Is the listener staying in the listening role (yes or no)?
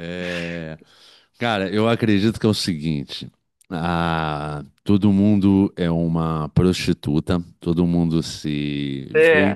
yes